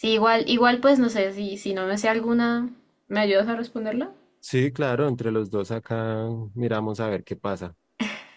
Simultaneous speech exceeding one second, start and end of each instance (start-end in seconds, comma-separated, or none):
none